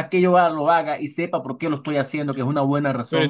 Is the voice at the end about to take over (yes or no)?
yes